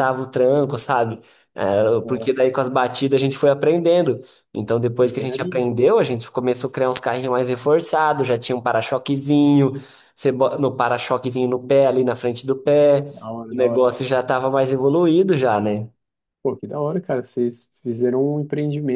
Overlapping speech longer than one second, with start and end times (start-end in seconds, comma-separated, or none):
none